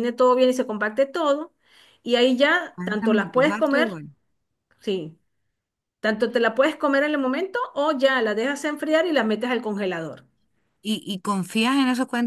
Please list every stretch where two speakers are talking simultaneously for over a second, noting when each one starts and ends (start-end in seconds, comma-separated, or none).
2.7-4.0